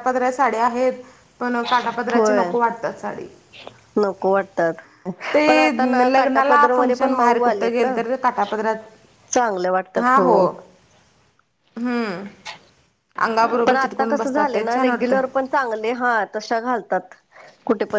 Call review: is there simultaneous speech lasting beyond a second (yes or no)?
yes